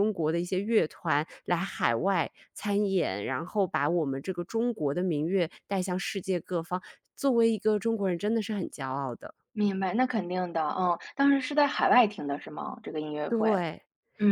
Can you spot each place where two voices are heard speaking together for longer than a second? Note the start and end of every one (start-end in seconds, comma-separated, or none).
none